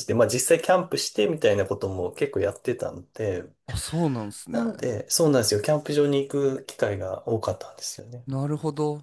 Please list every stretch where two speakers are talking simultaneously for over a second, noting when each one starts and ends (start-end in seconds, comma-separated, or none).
none